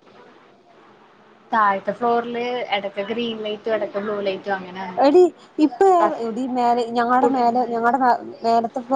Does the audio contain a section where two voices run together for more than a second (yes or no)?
no